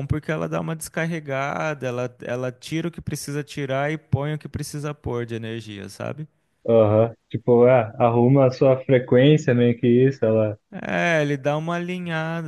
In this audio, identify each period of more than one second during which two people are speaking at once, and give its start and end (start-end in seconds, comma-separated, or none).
none